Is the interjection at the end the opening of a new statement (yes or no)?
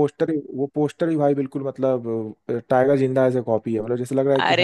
yes